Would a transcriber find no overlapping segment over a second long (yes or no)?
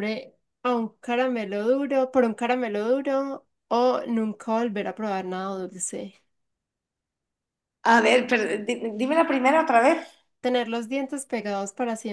yes